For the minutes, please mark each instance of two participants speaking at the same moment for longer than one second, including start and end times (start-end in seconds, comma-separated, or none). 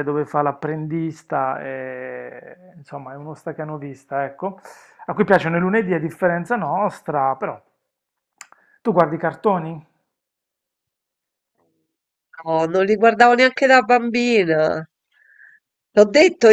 none